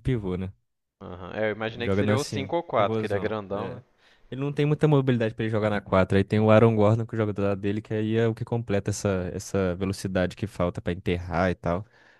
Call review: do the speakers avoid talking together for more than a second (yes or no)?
no